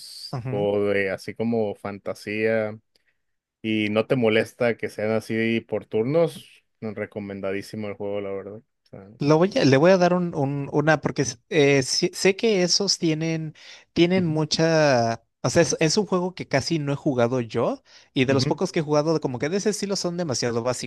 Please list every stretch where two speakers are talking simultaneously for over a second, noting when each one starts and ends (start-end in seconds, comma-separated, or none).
none